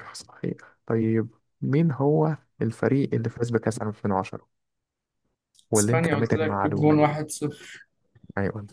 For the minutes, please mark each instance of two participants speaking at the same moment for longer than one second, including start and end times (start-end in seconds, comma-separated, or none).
5.8-7.1